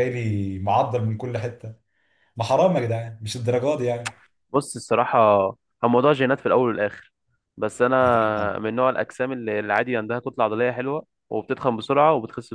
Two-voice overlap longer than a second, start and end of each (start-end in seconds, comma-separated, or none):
none